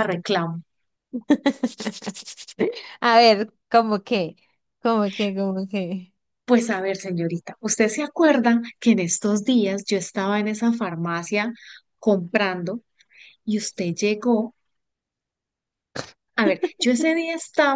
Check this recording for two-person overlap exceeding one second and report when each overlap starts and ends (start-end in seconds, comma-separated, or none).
none